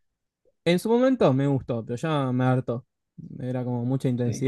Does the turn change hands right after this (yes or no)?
yes